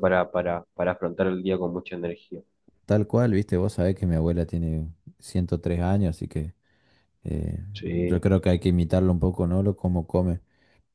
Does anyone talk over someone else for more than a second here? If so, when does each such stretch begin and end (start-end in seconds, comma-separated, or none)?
none